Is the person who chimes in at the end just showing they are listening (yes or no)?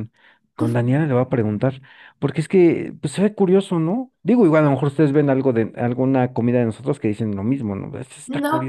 no